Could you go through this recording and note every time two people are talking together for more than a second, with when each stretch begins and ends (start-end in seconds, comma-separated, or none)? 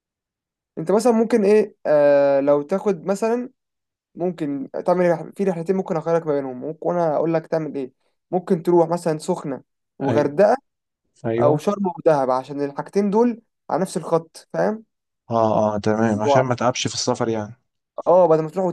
none